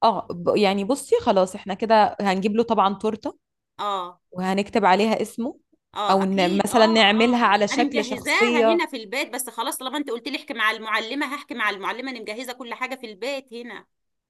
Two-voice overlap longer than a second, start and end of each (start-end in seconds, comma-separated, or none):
6.1-8.8